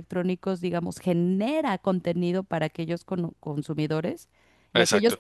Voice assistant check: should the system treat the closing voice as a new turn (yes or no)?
no